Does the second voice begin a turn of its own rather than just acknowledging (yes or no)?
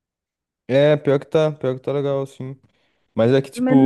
no